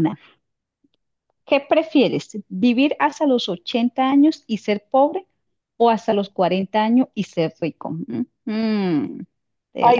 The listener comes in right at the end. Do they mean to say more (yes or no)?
yes